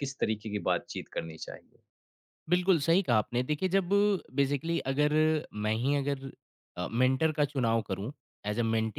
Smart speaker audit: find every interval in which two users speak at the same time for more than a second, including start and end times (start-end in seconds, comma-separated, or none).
none